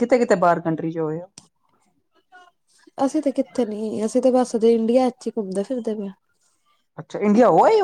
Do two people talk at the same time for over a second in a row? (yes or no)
no